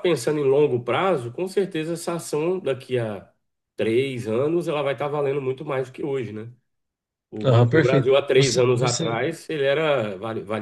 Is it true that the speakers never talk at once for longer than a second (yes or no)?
no